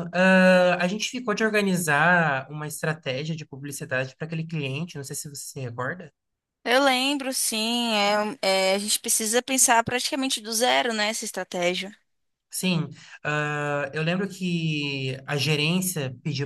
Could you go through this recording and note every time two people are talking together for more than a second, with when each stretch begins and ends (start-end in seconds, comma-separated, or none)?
none